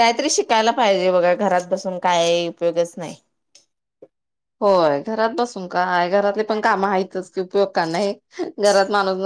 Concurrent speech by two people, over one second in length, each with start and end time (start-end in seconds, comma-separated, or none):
none